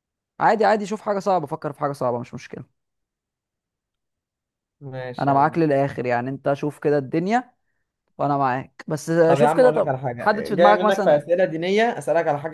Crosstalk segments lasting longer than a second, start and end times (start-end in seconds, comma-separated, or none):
9.3-11.2